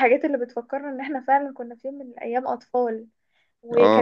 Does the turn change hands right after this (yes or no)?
no